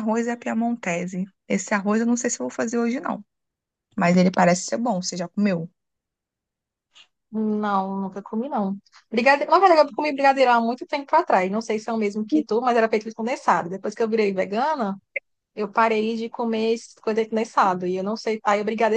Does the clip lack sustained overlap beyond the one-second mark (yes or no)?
yes